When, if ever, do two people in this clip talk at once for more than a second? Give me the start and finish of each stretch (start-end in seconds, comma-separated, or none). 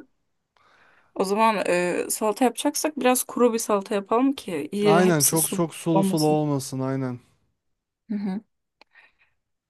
4.8-6.4